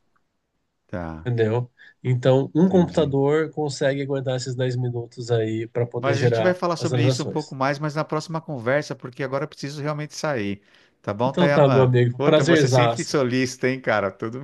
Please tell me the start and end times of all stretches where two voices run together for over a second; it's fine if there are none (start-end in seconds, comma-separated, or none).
6.0-7.5, 11.2-13.2